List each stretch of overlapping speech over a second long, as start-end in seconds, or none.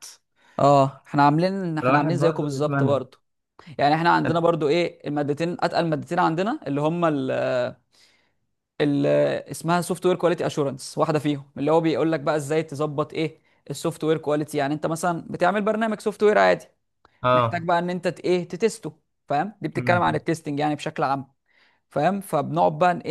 1.8-3.0